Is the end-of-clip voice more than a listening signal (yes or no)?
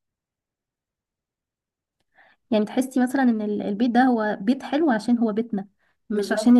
no